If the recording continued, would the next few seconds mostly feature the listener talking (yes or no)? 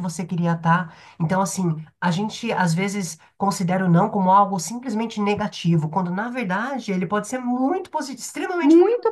yes